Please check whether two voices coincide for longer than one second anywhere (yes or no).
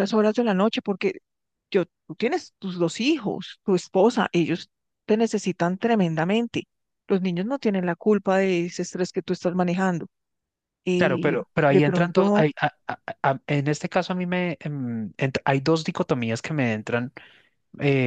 yes